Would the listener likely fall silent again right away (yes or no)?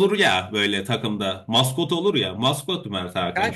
no